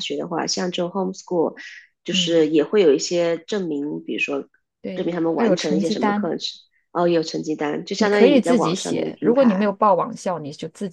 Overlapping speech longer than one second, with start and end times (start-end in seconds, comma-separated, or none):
4.9-6.3, 8.0-9.7